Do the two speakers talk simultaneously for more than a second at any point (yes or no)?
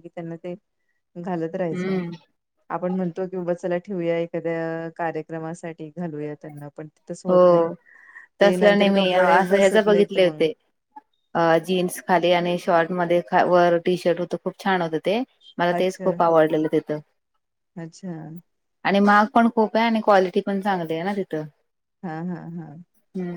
yes